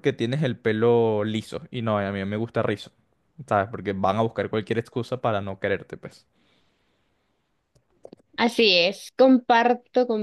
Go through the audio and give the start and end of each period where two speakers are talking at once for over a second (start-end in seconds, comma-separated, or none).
none